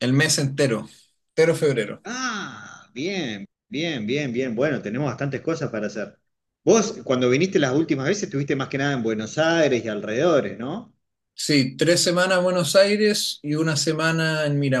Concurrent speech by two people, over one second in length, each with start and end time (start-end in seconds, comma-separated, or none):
none